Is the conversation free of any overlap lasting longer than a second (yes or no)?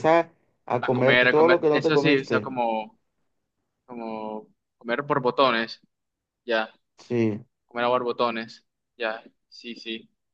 no